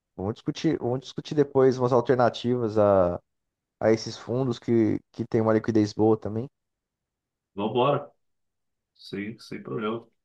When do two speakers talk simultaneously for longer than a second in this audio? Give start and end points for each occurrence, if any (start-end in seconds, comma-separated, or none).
none